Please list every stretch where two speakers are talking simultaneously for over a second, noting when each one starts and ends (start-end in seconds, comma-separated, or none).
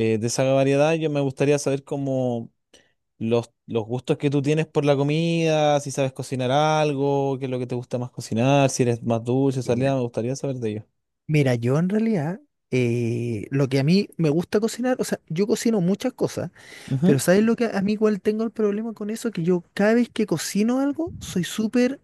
none